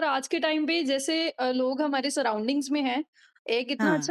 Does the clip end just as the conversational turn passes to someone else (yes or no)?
no